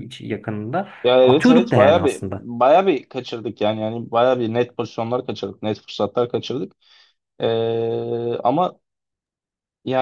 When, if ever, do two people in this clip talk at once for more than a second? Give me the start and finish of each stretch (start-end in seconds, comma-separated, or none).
1.2-2.5